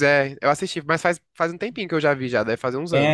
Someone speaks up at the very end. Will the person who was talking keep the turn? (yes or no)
no